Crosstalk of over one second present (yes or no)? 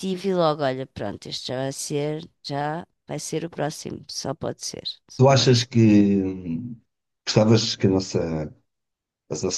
no